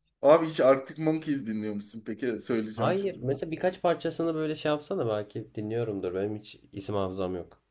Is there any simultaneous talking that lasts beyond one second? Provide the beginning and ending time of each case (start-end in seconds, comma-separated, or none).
none